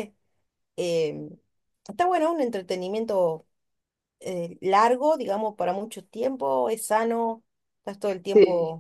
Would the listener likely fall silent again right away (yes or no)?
yes